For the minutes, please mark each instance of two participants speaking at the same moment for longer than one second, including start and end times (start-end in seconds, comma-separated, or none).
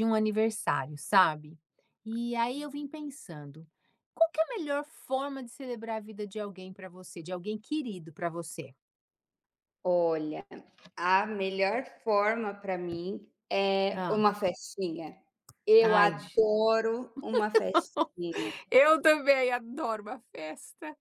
none